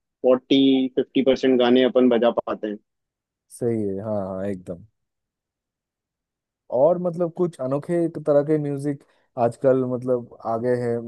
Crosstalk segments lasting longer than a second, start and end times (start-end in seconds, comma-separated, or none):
none